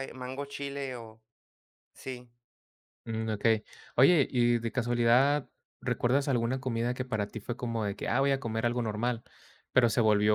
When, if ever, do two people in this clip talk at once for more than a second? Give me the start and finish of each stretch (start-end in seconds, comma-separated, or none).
none